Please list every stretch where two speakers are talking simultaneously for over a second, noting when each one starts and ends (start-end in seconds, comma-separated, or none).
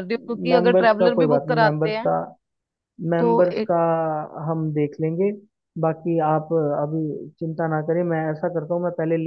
0.5-2.1